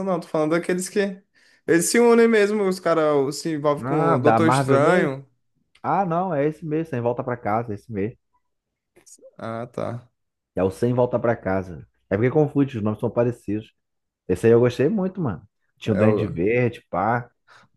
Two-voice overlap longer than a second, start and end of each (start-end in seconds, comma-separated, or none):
3.8-5.1